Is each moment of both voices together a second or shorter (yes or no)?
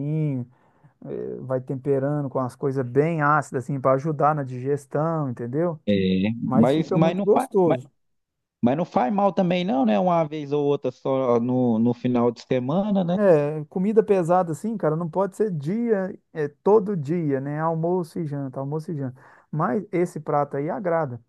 no